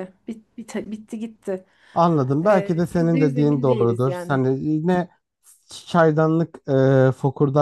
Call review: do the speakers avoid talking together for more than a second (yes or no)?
no